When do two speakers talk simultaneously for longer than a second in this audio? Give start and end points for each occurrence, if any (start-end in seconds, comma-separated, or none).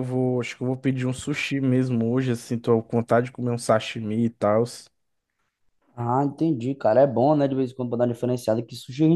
none